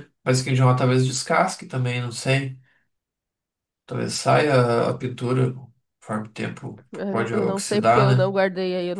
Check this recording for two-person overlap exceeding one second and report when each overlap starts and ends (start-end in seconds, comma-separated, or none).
6.9-8.3